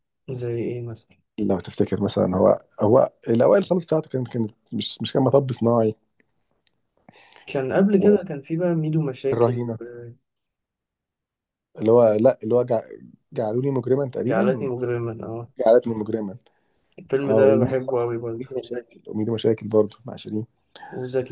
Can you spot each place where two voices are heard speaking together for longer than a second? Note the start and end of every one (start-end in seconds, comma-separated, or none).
17.2-18.5